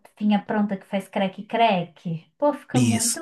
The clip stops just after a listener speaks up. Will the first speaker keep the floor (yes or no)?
no